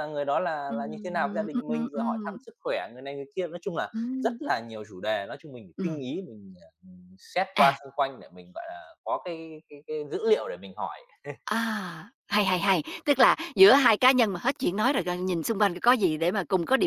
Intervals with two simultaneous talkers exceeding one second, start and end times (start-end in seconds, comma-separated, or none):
0.7-2.4